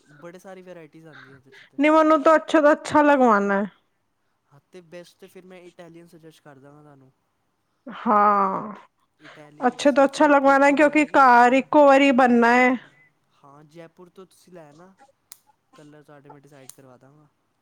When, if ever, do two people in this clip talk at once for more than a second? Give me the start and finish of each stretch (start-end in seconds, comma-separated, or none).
9.7-11.6